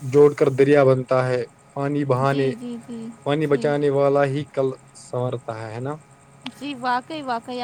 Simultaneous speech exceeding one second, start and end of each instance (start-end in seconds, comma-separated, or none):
none